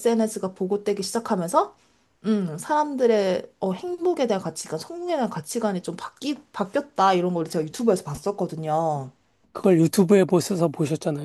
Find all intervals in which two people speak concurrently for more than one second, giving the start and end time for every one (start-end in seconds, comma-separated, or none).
none